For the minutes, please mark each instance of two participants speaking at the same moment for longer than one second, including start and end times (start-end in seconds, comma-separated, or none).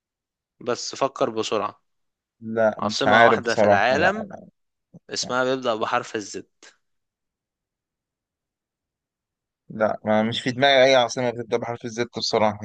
2.8-4.3